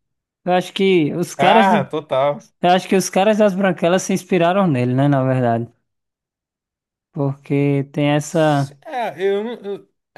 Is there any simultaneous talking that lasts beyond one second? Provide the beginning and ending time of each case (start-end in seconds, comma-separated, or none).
none